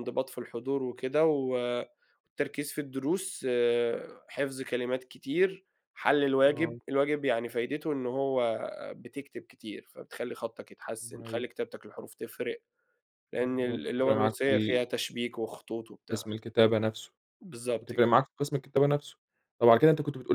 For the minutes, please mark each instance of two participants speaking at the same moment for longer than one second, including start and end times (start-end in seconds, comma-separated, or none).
13.3-14.8